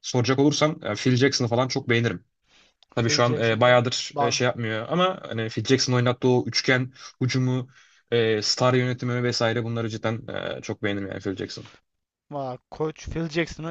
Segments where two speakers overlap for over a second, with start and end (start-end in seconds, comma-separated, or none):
3.0-4.4